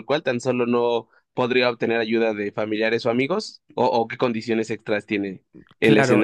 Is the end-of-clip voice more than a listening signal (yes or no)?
yes